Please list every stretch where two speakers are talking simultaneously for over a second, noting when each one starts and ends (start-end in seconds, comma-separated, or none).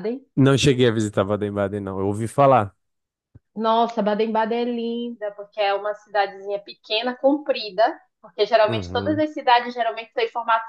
none